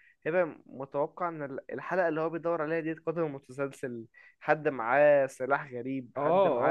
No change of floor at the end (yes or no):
no